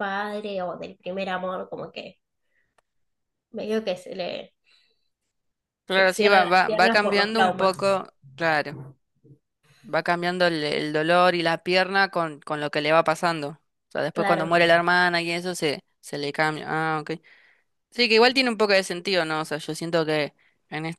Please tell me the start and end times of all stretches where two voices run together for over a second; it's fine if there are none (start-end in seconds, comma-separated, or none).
5.9-7.8